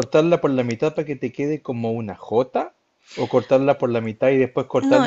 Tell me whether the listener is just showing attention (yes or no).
yes